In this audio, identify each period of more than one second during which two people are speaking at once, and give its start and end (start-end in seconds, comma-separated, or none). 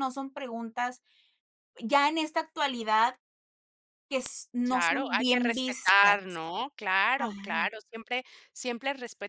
4.7-6.4